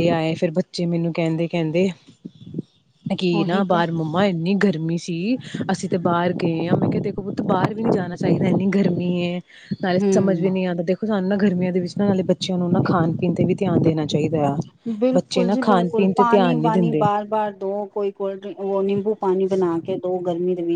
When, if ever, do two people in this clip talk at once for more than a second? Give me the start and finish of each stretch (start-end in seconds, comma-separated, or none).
15.1-17.0